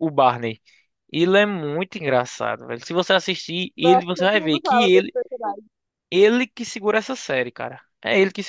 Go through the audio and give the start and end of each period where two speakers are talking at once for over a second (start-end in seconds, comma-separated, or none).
3.8-5.1